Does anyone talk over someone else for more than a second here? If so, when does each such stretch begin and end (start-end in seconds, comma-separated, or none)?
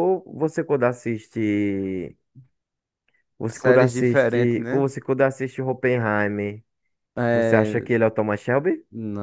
3.5-4.8